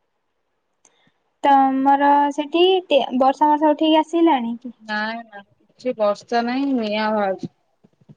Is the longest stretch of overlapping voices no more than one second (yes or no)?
yes